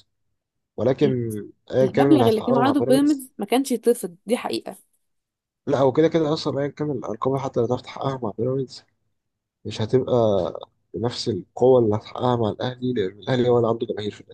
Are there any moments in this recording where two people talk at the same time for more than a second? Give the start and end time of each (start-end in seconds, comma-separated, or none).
1.8-3.3